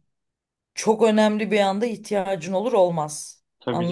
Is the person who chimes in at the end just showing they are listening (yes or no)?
no